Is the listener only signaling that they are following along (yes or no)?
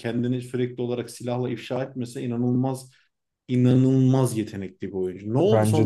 no